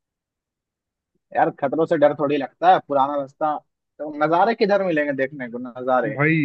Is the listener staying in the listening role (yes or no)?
no